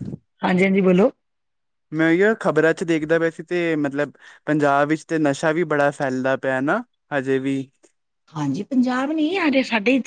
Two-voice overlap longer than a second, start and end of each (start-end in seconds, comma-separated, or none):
none